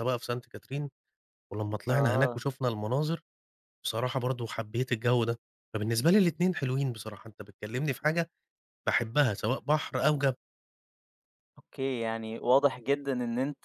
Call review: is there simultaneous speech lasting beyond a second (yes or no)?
no